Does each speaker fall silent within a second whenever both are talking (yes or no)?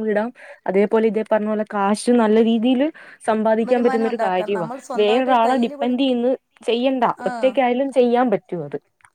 no